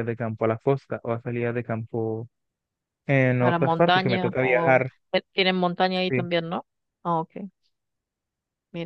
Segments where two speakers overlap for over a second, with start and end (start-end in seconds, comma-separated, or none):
3.4-4.9